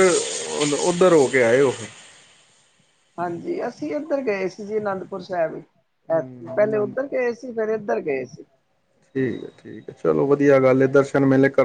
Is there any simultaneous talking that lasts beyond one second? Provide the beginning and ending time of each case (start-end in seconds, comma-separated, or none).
6.1-7.5